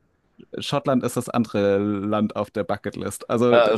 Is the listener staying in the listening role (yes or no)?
no